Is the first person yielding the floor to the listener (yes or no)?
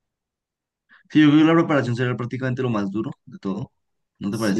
yes